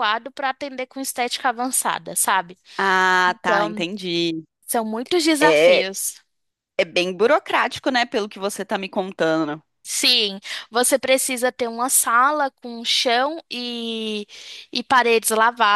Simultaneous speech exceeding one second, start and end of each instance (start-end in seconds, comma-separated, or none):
none